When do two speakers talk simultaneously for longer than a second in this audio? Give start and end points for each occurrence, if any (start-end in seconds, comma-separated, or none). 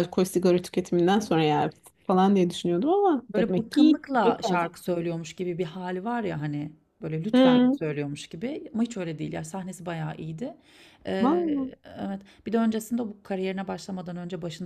3.3-4.7